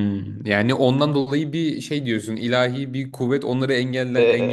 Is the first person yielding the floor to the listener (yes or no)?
yes